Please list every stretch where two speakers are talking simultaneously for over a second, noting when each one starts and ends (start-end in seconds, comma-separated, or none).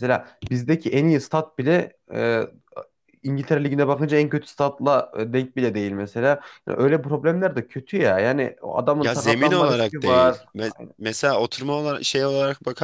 9.0-10.9